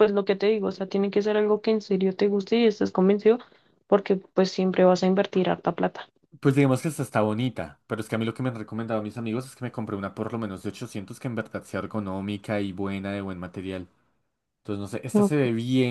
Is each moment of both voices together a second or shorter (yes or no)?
yes